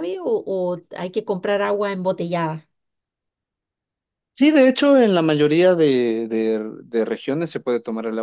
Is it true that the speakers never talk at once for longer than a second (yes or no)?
yes